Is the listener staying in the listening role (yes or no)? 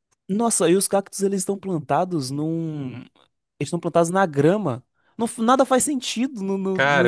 no